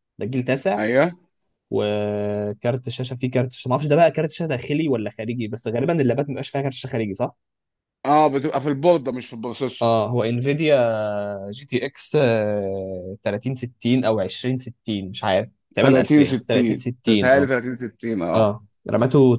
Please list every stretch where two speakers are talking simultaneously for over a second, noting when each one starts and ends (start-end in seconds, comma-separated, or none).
15.8-17.5